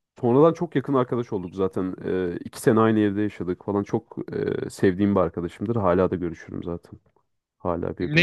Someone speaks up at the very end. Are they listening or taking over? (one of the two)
taking over